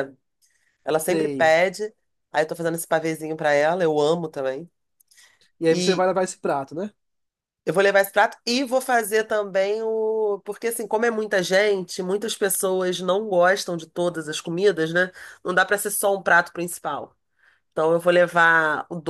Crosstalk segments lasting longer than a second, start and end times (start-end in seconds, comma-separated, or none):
none